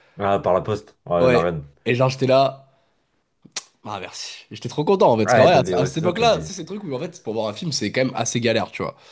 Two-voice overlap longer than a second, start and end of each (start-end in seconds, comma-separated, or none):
5.2-6.5